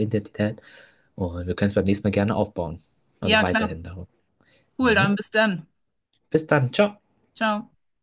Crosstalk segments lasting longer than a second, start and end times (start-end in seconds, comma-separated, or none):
none